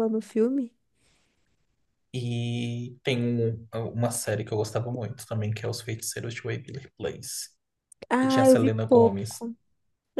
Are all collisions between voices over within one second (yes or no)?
no